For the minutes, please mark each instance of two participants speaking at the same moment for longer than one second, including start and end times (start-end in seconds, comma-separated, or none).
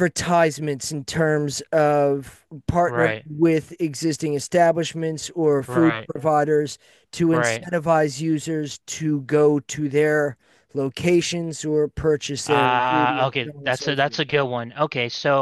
12.5-14.2